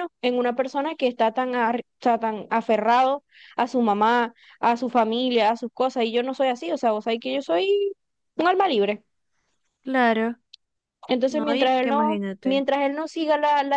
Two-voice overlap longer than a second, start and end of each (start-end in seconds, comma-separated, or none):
11.3-12.7